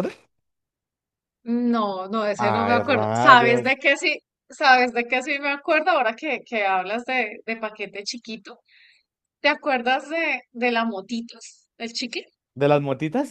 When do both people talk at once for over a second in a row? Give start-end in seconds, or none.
2.4-3.7